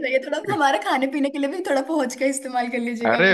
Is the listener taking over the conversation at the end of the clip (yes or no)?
yes